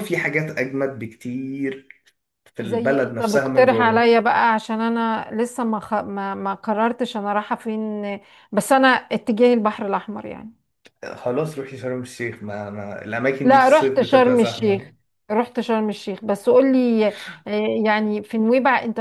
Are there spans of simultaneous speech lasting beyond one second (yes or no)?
yes